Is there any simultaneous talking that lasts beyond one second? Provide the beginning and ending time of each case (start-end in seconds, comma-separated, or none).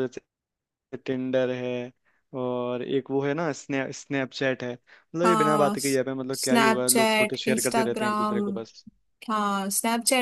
6.4-8.4